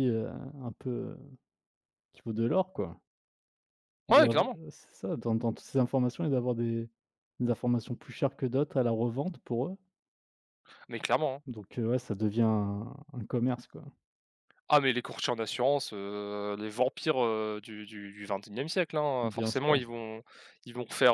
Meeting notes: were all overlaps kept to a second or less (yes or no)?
yes